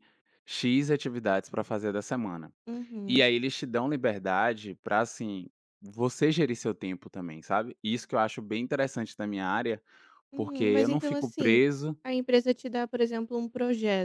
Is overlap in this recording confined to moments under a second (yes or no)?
no